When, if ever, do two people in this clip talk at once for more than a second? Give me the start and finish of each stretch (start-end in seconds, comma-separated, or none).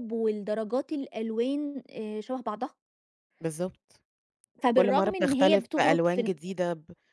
4.7-6.3